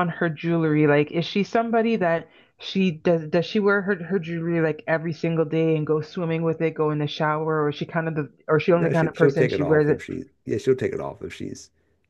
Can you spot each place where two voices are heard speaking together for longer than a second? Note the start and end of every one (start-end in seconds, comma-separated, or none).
8.7-10.1